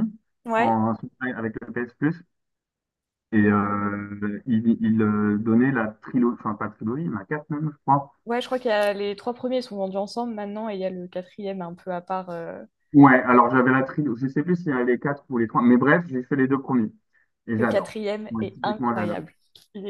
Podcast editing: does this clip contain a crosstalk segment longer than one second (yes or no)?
yes